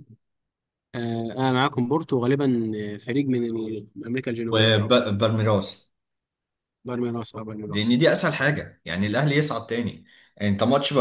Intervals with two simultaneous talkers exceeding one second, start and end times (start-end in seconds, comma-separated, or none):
none